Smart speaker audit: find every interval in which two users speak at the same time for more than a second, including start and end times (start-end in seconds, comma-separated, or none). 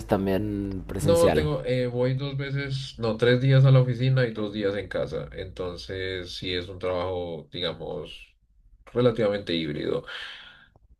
none